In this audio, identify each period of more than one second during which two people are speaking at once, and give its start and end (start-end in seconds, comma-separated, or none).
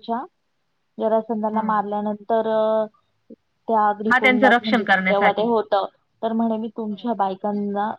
4.1-5.5